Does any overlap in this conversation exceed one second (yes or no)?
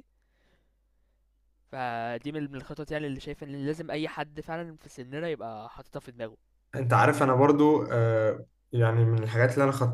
no